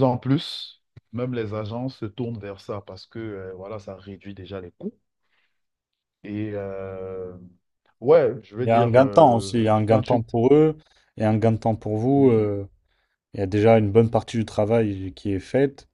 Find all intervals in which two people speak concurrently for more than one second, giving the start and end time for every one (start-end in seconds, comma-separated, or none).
8.6-10.2